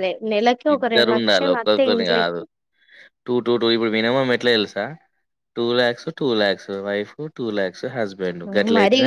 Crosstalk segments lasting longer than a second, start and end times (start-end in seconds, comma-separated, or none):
0.8-2.4